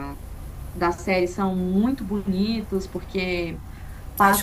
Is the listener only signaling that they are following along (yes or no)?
yes